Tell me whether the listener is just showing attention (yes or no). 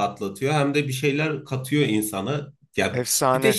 yes